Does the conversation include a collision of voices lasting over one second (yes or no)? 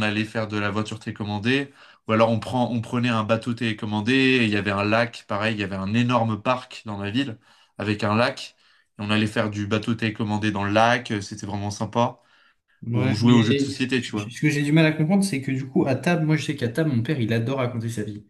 yes